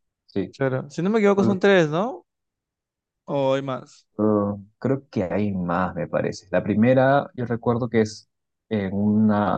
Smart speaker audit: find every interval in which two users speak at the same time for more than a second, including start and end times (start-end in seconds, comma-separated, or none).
none